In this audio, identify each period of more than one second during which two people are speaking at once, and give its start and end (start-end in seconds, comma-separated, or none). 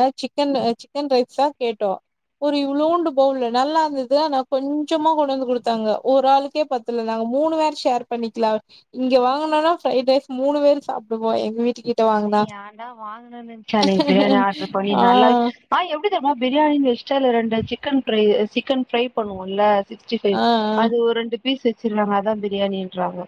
none